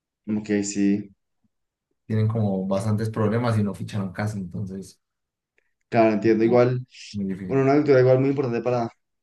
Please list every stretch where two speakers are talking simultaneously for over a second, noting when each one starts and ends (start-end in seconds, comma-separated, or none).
none